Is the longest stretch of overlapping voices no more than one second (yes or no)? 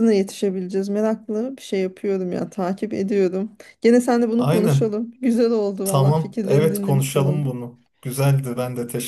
no